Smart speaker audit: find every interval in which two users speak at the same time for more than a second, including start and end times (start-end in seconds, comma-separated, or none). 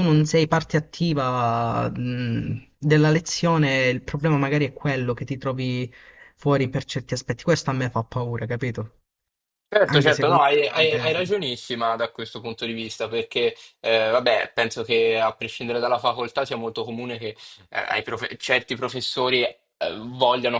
9.9-11.1